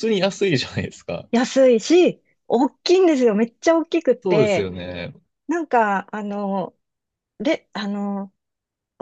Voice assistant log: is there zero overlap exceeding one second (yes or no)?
yes